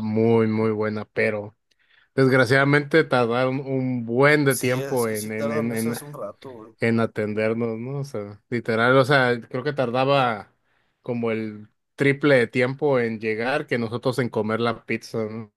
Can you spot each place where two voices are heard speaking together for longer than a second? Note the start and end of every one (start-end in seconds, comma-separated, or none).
4.5-6.0